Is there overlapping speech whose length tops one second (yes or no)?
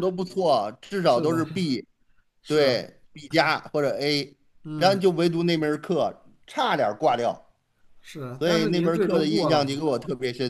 yes